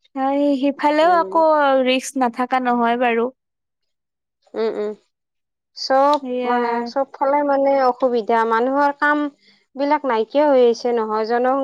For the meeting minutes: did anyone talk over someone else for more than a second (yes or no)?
no